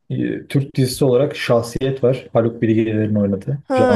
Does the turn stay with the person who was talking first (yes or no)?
no